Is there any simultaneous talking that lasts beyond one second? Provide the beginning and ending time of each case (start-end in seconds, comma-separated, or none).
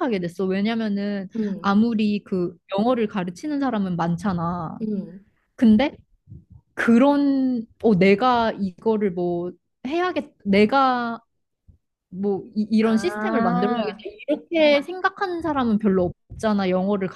12.8-14.0